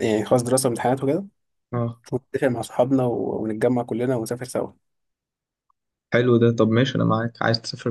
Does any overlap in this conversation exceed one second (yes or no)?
no